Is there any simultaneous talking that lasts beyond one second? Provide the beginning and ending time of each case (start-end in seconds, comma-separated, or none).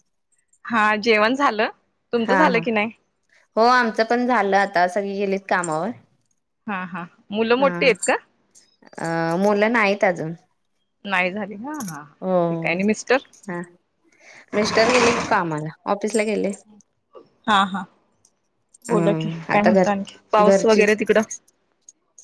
18.9-20.8